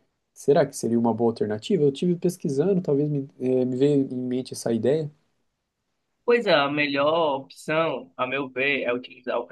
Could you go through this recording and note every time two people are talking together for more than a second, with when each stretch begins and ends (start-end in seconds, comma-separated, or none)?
none